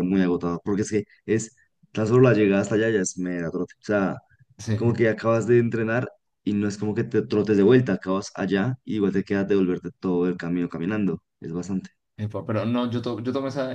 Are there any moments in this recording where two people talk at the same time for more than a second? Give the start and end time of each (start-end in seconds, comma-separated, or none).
none